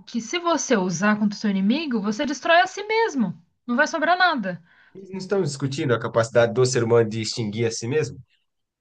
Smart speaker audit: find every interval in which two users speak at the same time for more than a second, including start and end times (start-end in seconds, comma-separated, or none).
none